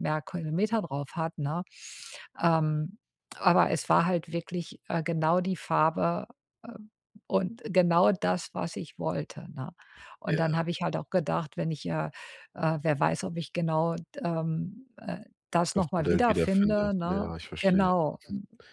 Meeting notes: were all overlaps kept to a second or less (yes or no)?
no